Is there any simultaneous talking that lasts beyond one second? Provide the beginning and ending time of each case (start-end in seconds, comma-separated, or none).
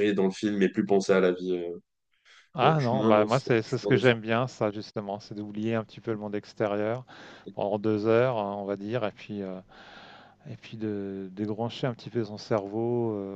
2.6-4.1